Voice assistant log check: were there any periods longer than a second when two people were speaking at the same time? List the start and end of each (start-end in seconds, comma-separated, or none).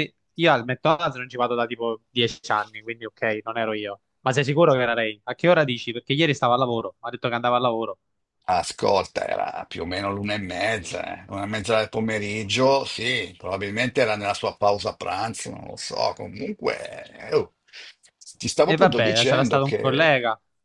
18.6-20.1